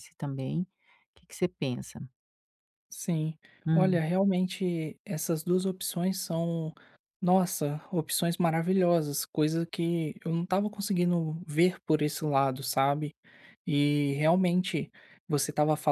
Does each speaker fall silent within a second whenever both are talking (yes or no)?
yes